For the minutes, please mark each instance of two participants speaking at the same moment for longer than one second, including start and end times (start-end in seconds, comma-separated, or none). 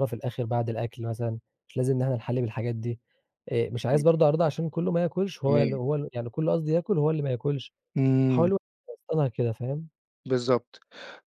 none